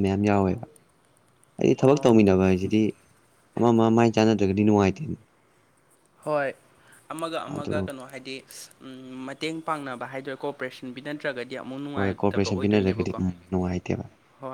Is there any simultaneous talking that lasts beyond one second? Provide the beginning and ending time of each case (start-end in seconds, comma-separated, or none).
11.9-13.1